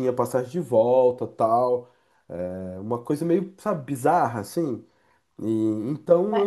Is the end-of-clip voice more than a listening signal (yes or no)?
yes